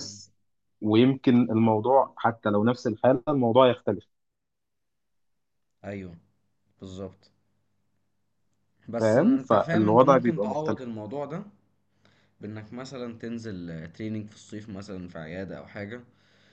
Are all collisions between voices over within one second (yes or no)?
no